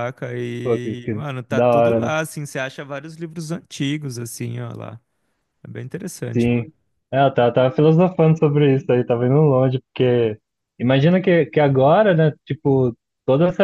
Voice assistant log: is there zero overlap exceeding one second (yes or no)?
no